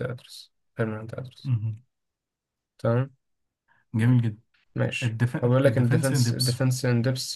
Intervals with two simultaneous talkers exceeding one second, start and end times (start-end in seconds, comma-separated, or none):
5.0-6.6